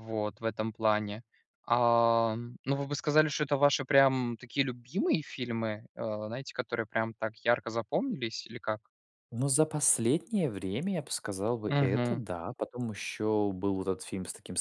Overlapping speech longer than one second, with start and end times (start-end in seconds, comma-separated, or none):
none